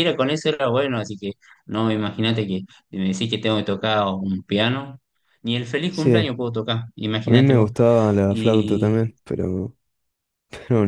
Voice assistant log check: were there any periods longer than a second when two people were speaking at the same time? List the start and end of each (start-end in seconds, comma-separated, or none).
none